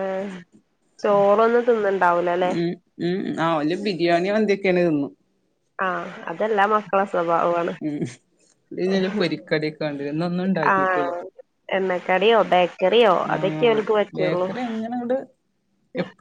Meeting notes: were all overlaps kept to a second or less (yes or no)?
yes